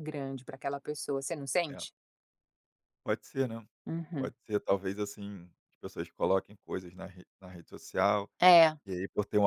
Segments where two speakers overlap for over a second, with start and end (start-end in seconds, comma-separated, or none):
none